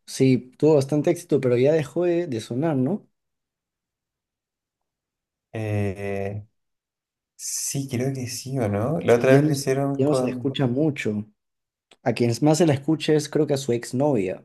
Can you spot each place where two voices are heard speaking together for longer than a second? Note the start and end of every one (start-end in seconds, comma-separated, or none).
9.1-10.6